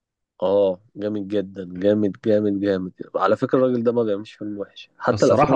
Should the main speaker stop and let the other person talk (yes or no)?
no